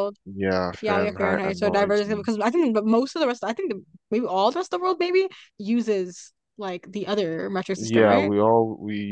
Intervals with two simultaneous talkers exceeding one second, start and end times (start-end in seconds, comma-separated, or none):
0.8-2.3